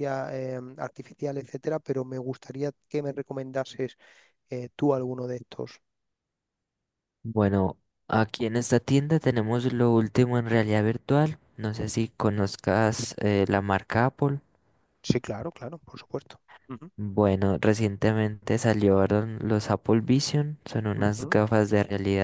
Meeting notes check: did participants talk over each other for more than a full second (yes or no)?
no